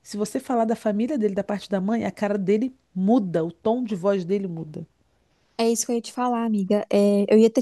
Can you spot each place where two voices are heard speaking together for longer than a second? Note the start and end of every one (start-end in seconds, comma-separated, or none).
none